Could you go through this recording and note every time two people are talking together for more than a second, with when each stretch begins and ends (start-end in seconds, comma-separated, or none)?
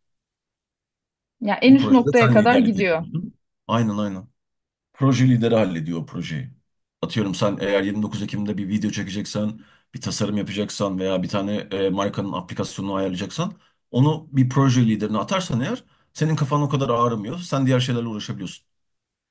1.6-3.0